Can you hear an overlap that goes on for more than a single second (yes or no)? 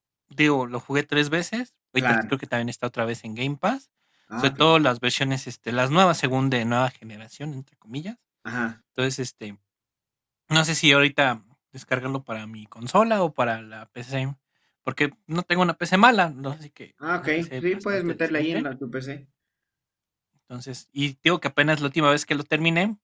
yes